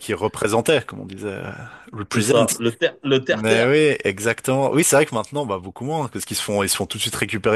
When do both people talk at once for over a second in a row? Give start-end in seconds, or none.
none